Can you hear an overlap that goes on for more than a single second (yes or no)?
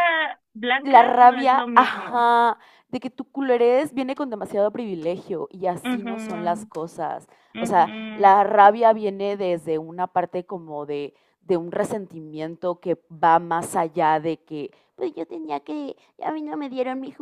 yes